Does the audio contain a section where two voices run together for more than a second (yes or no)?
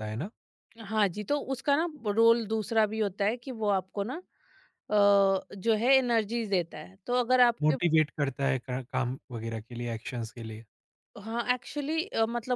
no